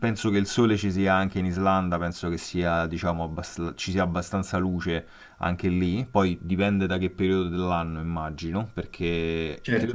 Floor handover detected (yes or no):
no